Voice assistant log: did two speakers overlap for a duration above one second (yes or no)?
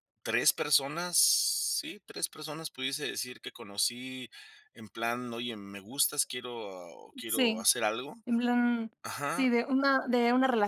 no